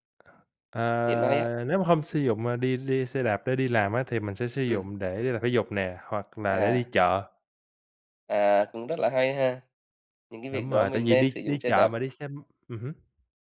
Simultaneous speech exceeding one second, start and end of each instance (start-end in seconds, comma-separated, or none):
10.5-11.9